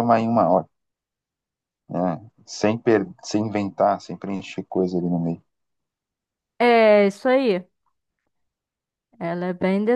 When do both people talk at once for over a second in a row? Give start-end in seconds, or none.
none